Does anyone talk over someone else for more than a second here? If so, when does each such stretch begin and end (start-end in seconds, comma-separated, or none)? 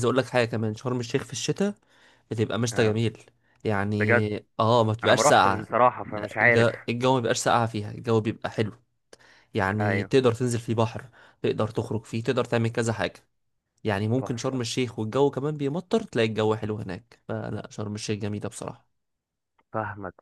5.0-6.7